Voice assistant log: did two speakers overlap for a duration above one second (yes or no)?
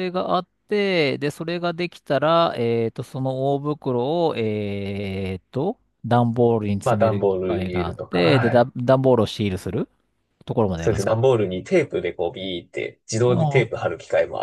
yes